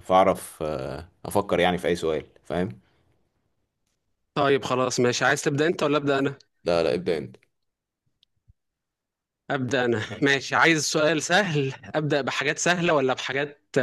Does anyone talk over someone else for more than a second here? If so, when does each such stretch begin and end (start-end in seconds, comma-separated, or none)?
none